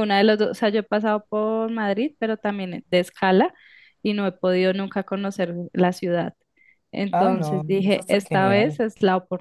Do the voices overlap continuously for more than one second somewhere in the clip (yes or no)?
yes